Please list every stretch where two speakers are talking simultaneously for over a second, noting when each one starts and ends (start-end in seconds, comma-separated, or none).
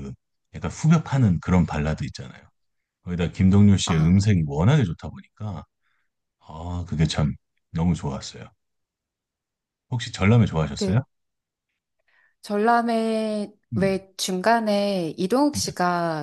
none